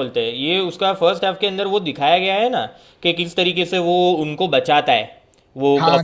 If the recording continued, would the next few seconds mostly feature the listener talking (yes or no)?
yes